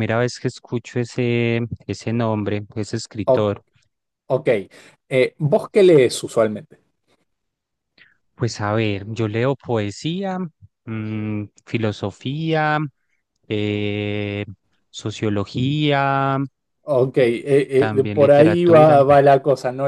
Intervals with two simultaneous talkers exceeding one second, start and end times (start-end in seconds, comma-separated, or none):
17.8-19.0